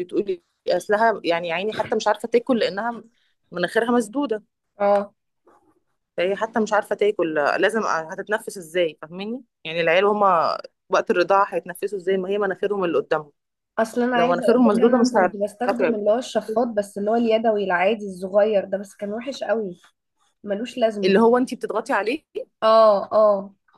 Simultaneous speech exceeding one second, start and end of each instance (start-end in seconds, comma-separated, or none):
14.1-16.1